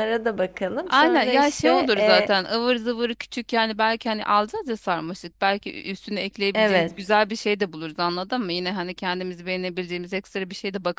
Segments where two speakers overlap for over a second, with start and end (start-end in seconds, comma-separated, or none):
0.9-2.3